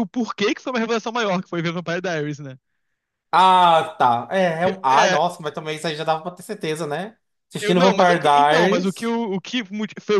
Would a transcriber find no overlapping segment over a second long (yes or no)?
no